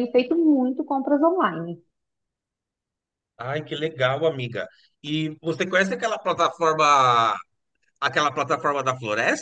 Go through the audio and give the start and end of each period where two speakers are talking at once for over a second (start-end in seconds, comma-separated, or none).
none